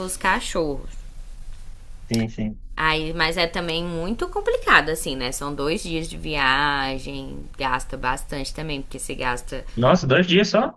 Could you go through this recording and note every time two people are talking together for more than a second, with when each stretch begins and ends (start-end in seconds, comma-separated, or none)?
none